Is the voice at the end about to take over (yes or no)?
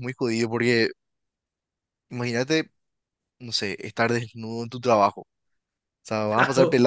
no